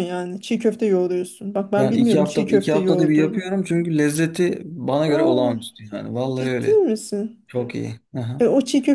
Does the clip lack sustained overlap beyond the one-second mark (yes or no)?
no